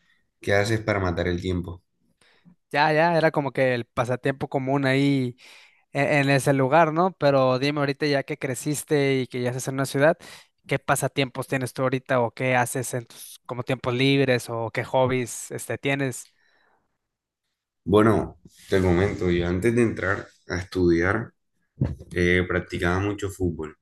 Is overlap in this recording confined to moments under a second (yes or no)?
yes